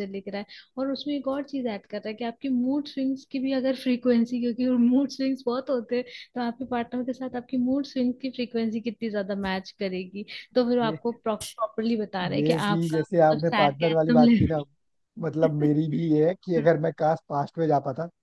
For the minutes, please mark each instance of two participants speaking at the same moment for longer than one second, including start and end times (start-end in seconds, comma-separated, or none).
12.3-14.6